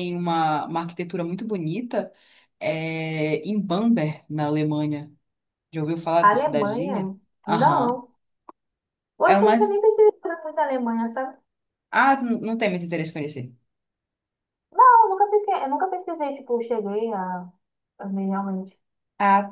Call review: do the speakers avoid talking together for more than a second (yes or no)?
no